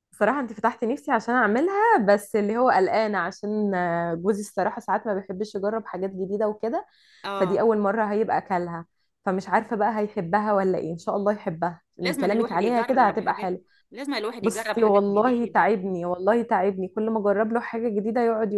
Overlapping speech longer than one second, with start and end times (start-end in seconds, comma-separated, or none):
12.0-13.6, 14.4-15.7